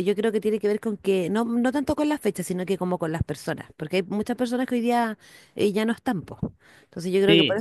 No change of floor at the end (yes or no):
no